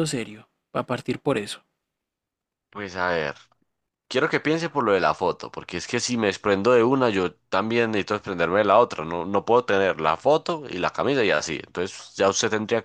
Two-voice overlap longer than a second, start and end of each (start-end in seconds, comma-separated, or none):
none